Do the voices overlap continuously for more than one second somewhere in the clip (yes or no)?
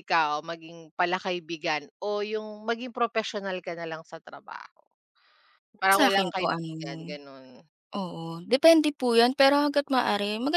yes